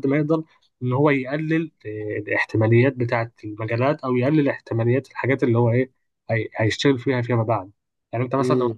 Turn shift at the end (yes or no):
no